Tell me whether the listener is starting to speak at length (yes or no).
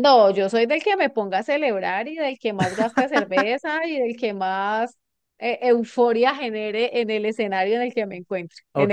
yes